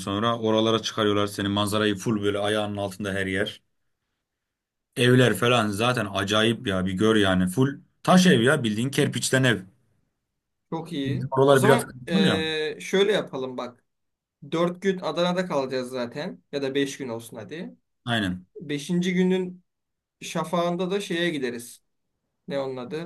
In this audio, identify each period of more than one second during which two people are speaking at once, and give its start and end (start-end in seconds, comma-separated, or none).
11.0-12.4